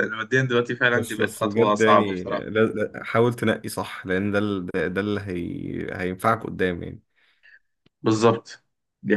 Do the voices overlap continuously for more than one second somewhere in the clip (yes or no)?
yes